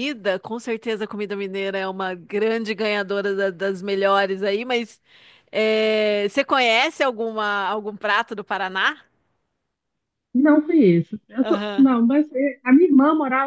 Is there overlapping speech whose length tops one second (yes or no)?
no